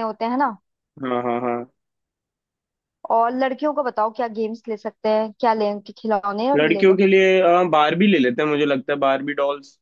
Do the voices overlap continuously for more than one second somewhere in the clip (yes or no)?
no